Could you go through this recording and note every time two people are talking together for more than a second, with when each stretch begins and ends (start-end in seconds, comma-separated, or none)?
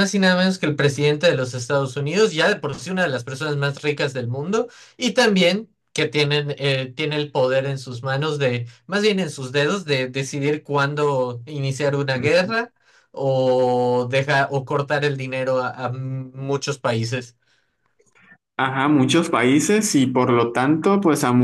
none